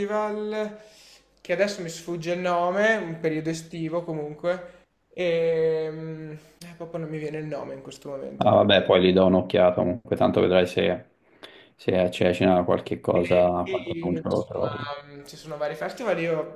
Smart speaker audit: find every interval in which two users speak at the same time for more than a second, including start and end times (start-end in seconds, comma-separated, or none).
13.1-14.9